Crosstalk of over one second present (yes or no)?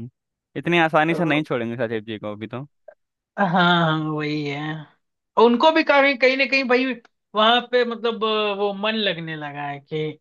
no